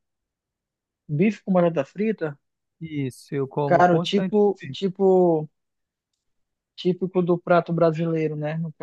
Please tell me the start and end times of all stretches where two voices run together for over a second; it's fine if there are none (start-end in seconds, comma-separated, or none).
3.7-4.9